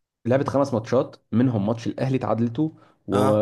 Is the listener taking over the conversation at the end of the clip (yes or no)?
no